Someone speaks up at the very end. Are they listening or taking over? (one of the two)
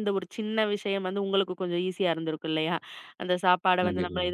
listening